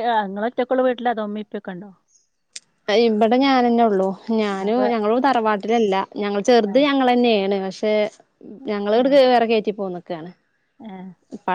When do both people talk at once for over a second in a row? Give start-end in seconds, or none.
none